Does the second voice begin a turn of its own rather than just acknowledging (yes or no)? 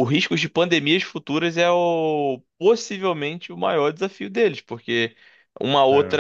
no